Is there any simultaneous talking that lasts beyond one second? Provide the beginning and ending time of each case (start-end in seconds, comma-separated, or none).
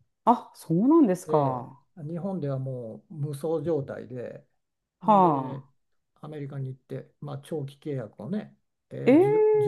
none